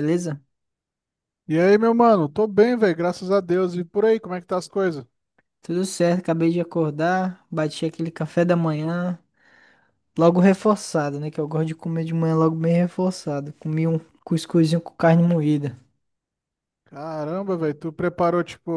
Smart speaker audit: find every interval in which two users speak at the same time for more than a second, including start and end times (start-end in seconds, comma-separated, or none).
none